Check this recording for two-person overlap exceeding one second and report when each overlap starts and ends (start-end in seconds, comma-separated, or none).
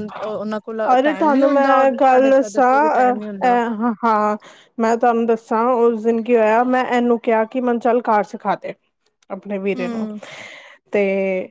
1.0-3.5